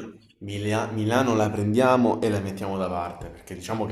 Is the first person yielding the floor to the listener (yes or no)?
no